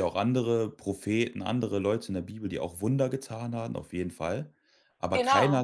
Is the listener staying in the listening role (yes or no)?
yes